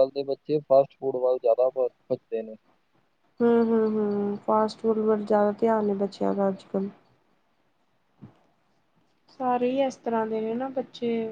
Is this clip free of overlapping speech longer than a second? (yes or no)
yes